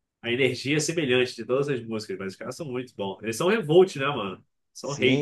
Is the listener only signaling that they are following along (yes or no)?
no